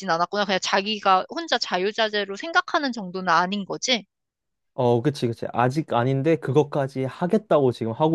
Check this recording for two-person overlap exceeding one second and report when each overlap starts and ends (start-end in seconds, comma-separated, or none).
none